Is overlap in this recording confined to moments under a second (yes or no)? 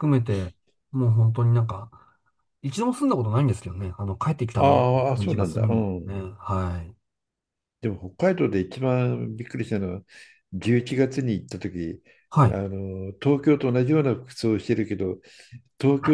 no